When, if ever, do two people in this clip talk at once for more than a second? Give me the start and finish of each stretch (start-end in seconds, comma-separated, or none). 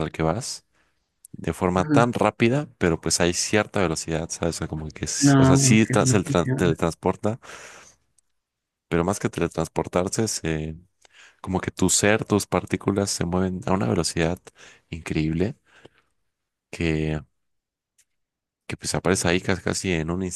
5.2-6.8